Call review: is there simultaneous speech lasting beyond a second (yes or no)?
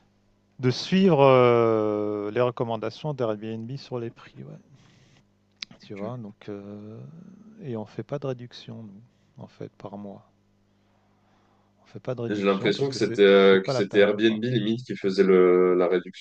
yes